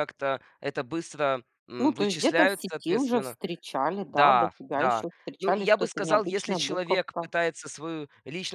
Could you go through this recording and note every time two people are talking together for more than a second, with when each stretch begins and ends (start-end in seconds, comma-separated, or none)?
1.8-3.4, 4.0-7.3